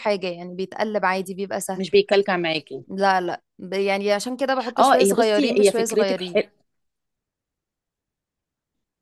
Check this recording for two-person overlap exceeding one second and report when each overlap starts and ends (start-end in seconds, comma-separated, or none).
4.8-6.4